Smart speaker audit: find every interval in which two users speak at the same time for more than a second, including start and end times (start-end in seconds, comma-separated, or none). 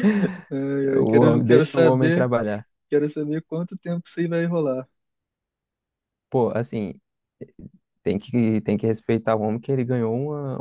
1.0-2.3